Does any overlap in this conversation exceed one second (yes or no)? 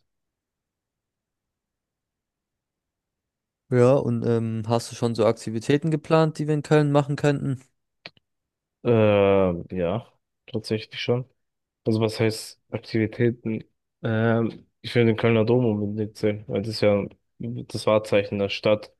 no